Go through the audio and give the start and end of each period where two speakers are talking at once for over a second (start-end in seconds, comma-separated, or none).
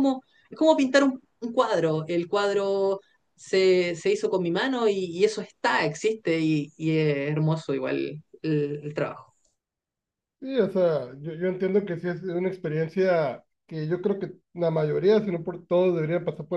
none